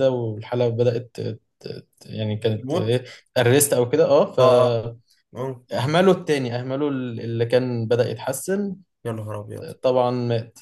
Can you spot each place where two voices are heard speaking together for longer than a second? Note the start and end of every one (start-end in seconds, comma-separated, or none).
none